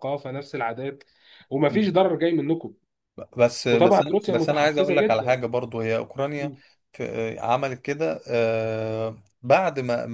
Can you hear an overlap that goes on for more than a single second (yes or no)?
yes